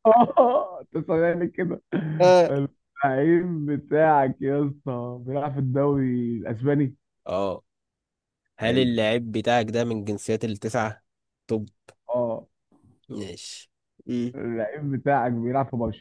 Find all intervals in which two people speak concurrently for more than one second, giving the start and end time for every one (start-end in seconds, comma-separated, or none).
none